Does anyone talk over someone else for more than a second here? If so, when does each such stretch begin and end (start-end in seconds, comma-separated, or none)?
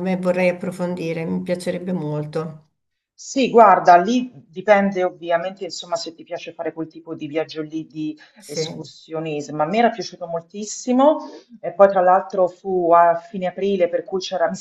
none